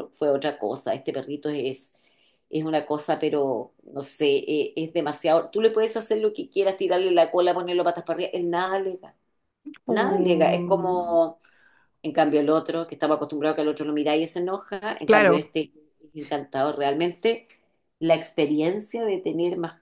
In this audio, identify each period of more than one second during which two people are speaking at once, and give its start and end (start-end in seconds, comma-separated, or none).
9.9-11.2